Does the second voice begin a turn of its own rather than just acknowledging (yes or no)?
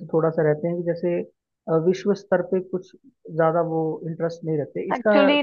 yes